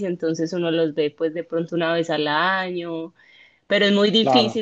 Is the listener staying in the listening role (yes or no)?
yes